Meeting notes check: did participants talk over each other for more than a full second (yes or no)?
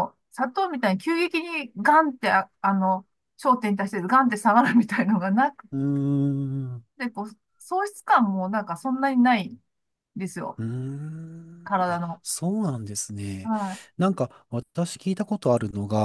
no